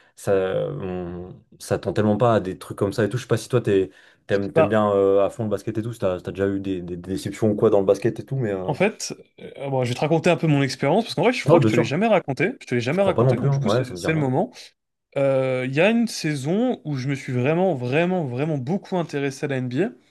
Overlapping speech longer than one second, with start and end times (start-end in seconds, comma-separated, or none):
12.9-14.3